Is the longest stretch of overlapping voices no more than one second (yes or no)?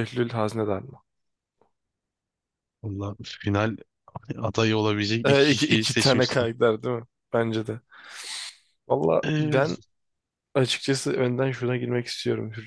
no